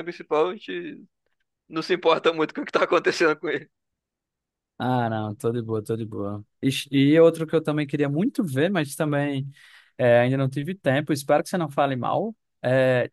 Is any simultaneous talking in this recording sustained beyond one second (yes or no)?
no